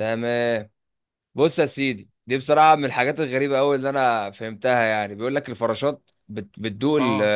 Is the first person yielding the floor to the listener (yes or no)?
no